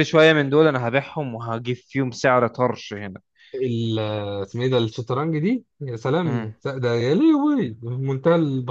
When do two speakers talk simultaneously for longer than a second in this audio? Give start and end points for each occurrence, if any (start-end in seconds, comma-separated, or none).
none